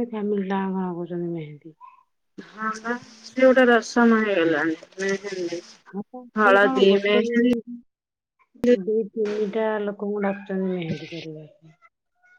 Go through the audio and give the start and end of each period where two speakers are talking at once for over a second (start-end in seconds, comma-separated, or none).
none